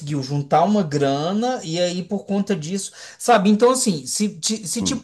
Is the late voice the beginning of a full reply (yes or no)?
no